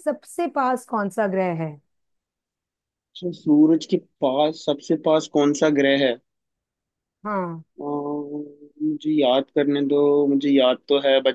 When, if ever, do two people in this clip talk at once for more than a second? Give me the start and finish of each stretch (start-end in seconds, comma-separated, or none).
none